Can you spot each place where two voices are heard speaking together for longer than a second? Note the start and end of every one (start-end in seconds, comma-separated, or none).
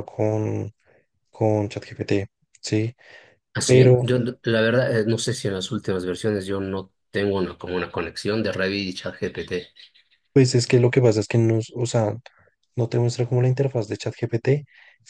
none